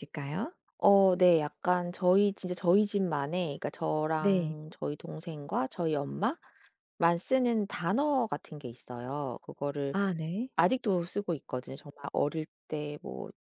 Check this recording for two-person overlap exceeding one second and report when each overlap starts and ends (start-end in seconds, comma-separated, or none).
none